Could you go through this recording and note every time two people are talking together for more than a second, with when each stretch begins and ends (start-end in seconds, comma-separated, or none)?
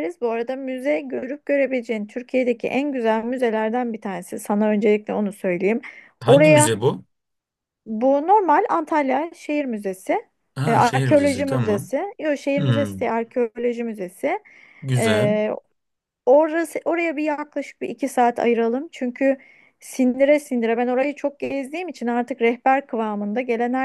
10.7-11.9